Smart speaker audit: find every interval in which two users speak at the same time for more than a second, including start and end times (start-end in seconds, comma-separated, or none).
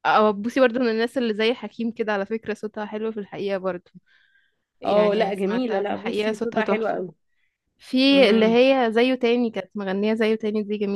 4.8-7.0